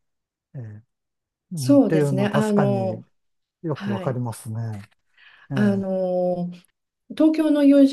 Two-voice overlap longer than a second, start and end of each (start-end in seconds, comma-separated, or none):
1.6-3.0